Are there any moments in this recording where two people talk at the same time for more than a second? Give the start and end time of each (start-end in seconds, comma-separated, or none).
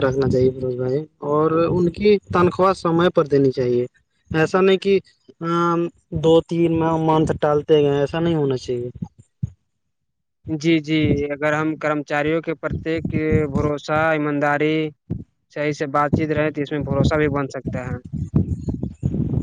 none